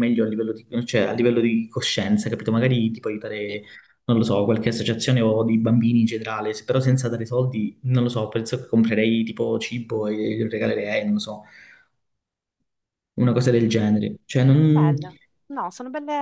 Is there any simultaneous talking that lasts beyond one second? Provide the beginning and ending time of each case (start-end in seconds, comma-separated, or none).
none